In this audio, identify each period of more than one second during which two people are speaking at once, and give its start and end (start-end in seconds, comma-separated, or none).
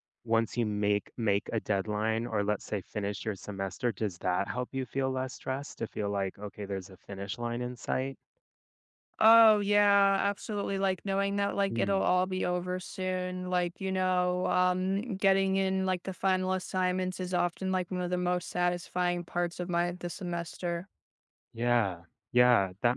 none